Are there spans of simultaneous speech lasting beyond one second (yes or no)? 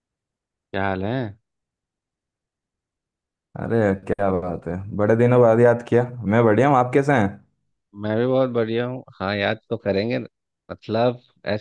no